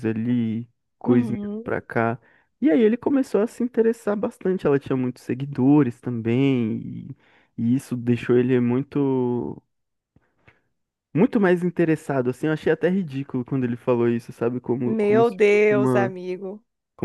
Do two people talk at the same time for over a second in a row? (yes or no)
yes